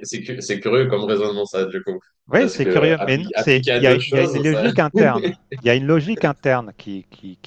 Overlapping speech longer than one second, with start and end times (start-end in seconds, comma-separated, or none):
2.3-4.7